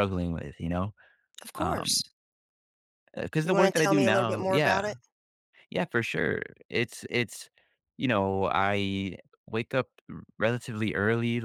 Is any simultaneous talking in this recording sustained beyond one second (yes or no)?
yes